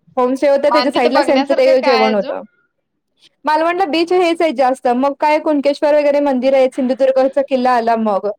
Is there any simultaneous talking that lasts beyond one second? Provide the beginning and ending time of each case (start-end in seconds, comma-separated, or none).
0.8-2.3